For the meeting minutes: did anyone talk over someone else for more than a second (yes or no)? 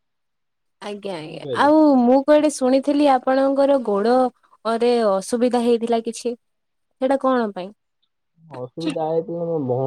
no